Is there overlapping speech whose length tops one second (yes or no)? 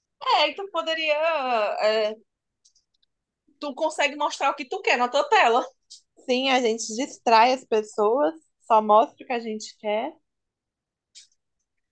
no